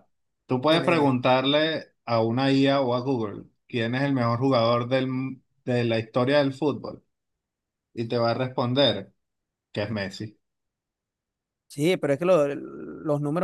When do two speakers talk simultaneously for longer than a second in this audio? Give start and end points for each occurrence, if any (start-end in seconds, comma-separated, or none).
none